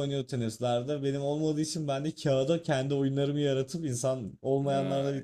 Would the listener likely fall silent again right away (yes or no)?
yes